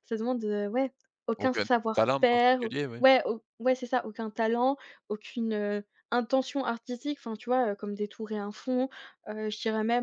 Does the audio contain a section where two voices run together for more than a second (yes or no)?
yes